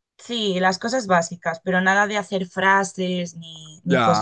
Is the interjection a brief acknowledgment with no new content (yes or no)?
no